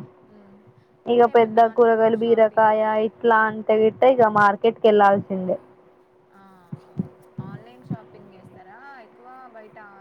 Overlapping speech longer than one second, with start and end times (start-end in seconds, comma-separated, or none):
1.1-2.7